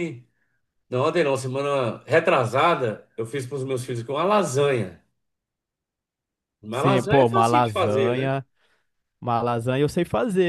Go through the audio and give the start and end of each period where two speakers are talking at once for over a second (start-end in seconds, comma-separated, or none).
6.7-8.3